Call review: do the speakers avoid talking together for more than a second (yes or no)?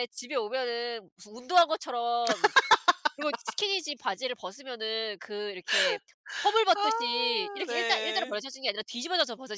no